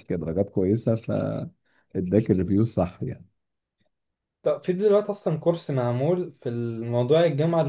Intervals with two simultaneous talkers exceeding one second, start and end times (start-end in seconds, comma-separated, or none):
none